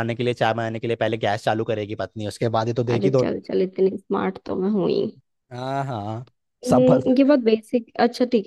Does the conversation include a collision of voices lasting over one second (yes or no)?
no